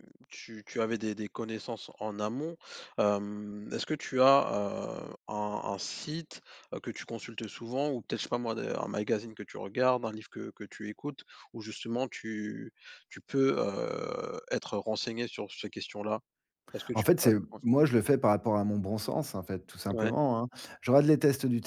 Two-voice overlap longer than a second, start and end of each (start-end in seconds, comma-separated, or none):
none